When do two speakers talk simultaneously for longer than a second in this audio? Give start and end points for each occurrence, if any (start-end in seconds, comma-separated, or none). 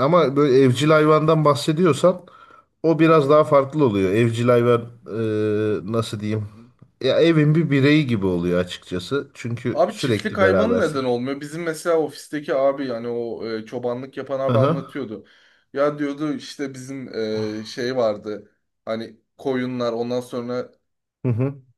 9.7-11.0